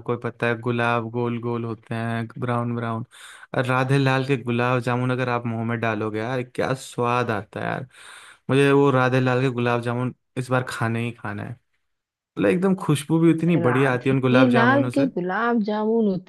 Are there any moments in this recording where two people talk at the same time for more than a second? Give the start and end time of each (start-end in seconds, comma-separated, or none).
13.6-15.1